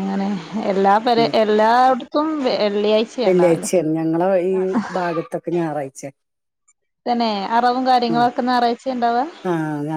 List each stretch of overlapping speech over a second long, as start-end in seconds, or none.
none